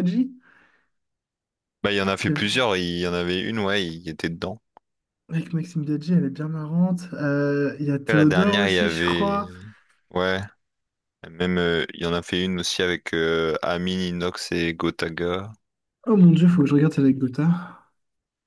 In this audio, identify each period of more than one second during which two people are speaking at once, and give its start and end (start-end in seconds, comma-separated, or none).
8.1-9.4